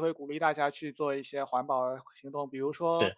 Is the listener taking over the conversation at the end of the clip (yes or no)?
no